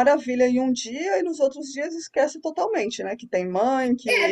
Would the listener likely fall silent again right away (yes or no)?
no